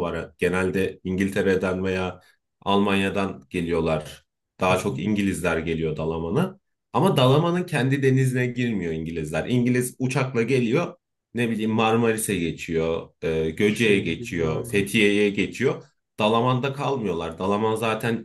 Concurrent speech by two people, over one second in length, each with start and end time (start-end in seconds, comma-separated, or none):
13.6-14.9